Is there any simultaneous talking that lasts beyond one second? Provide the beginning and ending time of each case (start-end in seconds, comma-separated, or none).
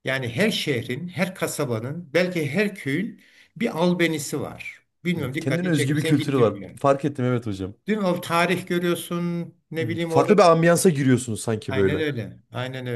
5.2-6.8